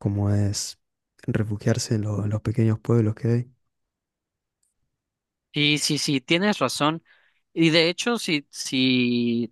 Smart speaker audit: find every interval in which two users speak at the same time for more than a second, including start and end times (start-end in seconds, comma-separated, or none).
none